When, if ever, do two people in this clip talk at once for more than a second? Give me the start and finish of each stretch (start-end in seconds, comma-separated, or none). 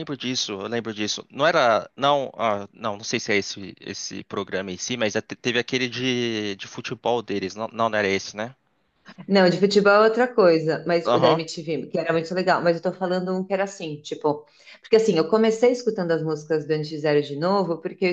none